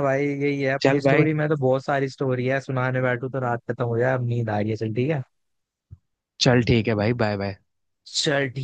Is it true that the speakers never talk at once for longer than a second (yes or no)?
yes